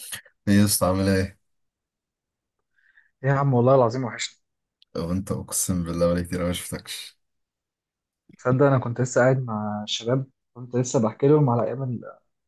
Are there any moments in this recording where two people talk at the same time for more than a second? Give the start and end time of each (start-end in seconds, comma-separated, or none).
none